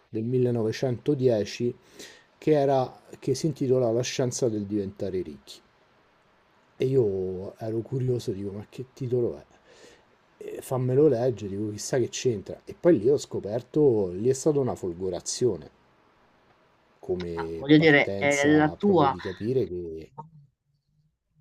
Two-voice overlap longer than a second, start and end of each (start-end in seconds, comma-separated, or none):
17.3-19.1